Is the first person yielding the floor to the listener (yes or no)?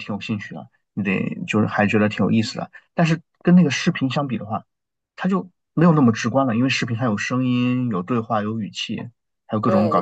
yes